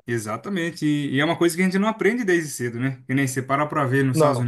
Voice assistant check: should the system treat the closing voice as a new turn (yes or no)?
no